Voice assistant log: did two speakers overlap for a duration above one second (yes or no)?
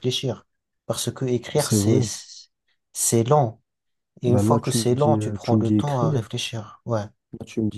yes